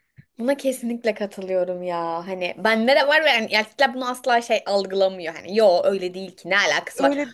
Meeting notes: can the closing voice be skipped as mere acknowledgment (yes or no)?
yes